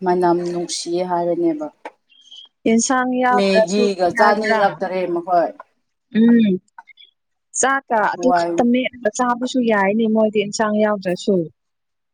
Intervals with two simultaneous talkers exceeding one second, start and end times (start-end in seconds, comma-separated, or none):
3.4-4.6